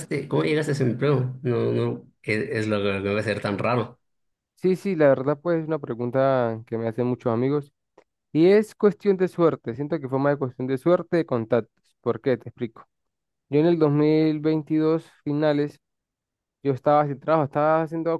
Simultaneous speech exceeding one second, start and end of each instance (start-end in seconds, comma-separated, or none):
none